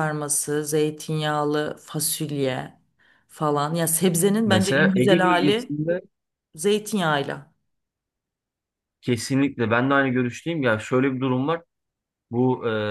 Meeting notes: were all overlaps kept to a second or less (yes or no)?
no